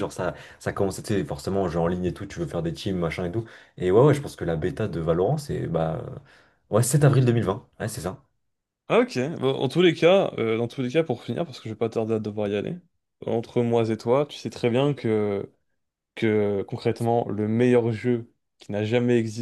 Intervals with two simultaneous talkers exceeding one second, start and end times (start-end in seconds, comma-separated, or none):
none